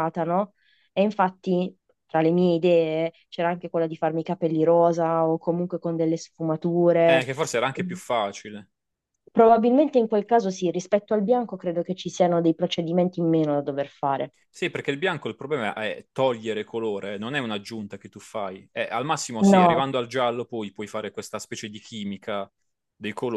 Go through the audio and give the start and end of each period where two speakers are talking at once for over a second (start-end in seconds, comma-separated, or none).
none